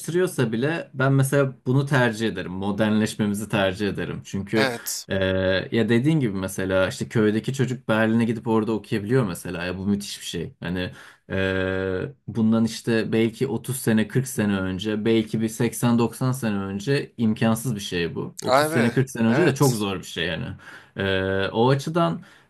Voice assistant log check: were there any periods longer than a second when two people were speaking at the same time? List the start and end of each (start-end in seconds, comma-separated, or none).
18.5-19.8